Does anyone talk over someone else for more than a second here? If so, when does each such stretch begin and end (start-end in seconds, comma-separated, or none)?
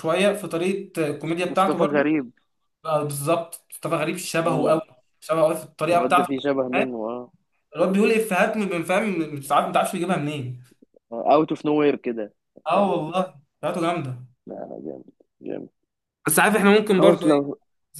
none